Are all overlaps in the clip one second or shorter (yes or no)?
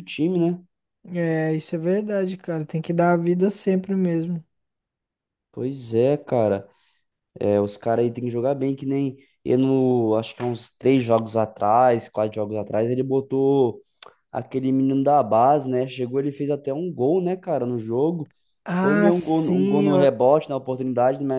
no